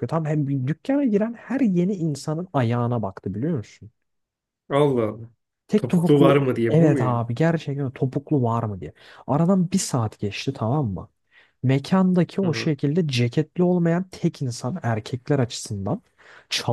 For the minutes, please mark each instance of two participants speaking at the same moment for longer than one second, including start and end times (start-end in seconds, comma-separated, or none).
5.8-7.2